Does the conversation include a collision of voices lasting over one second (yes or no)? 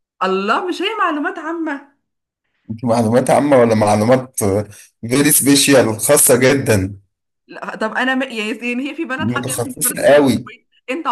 yes